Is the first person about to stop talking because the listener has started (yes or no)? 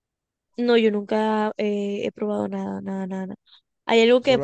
no